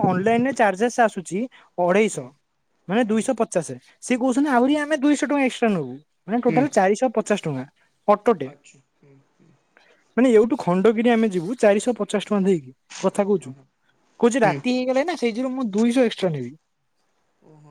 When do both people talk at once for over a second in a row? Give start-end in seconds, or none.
none